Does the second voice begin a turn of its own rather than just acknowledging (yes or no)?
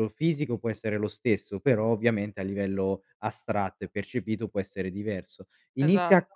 no